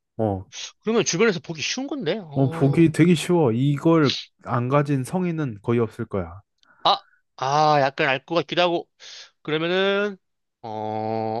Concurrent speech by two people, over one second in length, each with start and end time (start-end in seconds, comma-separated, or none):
none